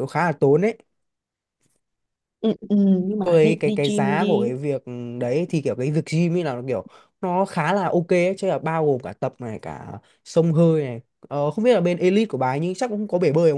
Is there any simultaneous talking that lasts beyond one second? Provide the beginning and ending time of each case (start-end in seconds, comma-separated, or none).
3.2-4.5